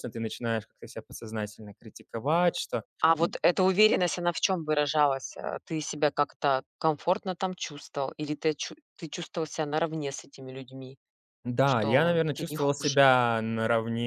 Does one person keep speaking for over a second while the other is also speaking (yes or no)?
yes